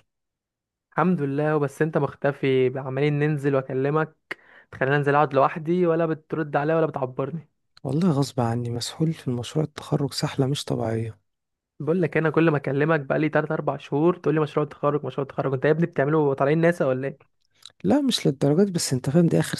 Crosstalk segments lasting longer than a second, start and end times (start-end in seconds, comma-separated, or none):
none